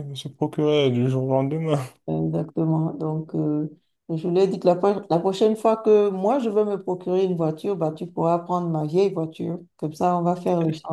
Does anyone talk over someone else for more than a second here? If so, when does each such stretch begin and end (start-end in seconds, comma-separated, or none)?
none